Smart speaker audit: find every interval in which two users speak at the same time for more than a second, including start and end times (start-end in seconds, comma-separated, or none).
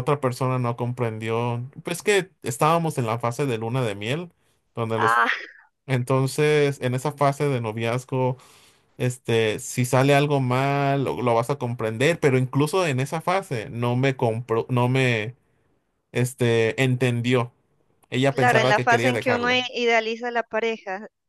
18.3-19.7